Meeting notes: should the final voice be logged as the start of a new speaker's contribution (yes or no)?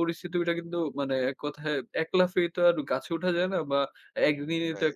no